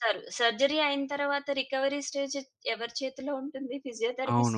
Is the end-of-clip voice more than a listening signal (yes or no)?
yes